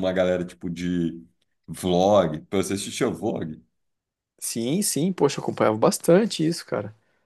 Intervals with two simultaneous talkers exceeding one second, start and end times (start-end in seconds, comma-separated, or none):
none